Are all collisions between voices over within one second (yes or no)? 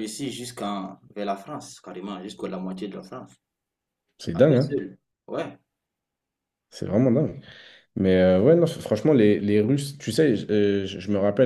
yes